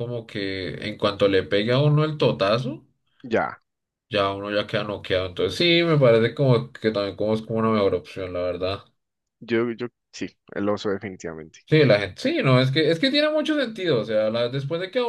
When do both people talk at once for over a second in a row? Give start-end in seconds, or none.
none